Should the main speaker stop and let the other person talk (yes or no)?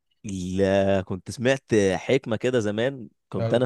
no